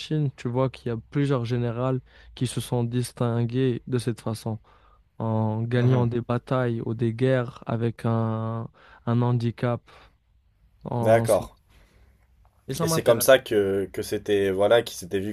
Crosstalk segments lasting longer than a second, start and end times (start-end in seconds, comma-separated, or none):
none